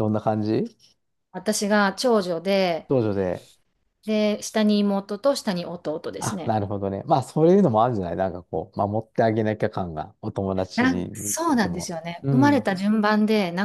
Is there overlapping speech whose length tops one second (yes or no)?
yes